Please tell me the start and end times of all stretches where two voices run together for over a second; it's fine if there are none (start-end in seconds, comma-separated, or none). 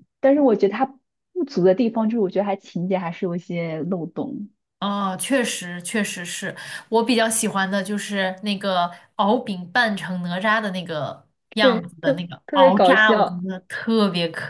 11.6-13.4